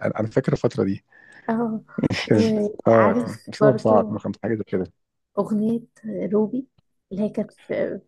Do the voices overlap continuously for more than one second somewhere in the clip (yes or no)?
yes